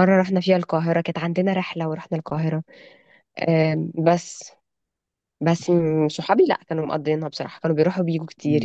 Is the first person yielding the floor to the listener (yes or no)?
no